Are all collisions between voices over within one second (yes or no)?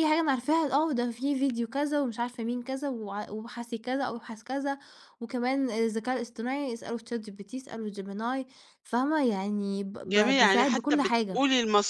no